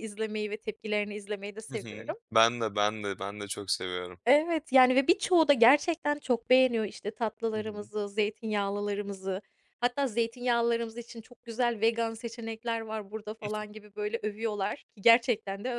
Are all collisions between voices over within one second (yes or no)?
yes